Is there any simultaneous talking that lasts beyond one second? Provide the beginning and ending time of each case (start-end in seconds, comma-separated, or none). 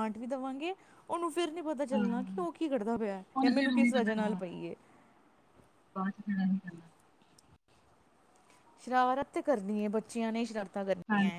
none